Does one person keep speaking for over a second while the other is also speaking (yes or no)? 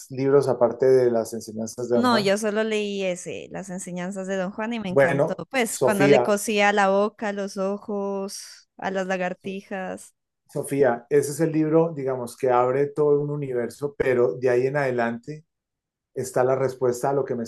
yes